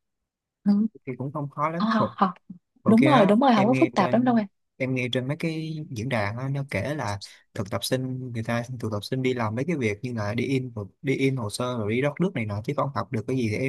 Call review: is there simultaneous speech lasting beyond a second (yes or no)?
yes